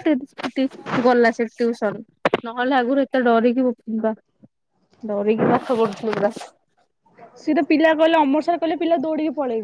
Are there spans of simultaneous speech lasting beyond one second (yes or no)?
no